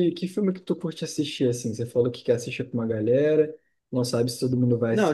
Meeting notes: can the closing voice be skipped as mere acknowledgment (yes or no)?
no